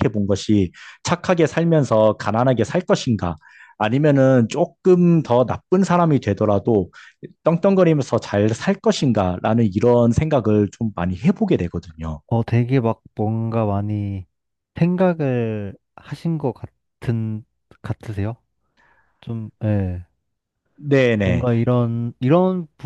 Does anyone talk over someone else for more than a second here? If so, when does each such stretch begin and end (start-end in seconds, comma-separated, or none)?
none